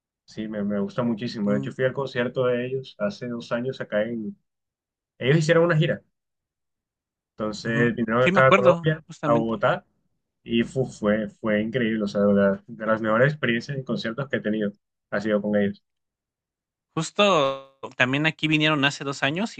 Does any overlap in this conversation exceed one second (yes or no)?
yes